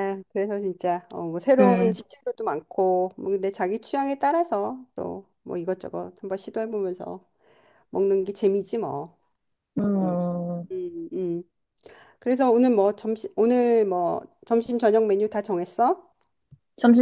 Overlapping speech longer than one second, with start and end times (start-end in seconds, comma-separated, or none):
none